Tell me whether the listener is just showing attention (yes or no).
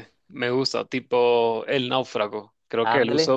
yes